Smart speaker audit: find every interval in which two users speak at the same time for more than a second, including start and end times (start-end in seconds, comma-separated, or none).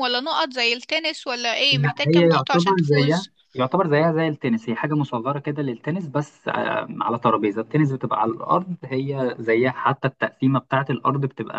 1.7-3.3